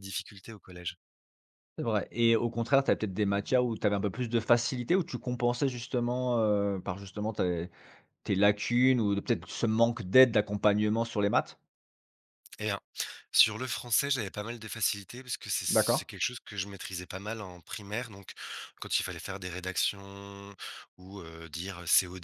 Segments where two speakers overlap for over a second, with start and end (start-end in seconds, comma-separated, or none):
none